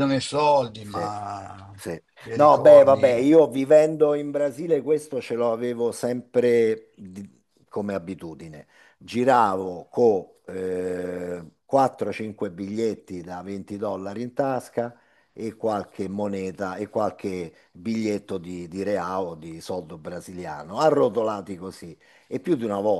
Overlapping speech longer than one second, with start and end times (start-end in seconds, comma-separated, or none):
2.2-3.4